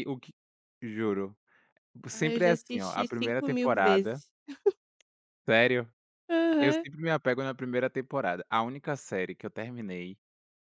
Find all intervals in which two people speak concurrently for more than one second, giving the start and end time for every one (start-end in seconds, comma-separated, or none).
2.1-4.2